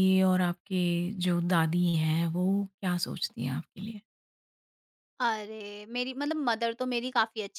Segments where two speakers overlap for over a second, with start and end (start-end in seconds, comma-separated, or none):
none